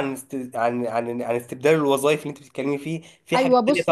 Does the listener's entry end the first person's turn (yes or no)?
no